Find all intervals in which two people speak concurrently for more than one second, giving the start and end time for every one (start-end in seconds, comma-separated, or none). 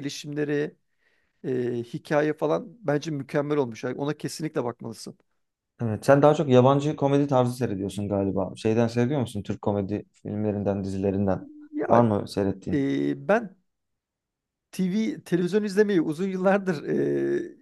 none